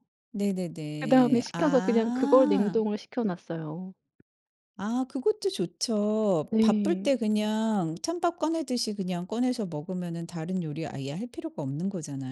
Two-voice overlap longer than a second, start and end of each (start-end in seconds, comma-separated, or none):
1.0-2.8